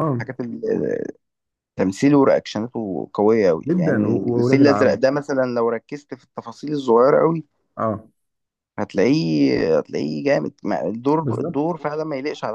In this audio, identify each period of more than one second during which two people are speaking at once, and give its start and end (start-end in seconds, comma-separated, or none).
3.7-5.0